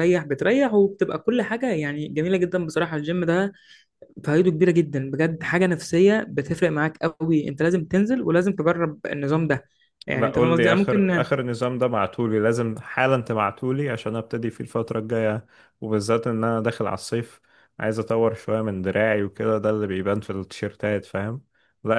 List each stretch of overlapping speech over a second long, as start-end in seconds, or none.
10.1-11.3